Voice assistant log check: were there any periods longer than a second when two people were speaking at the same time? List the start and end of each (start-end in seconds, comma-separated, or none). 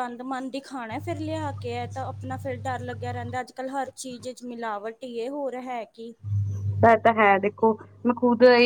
none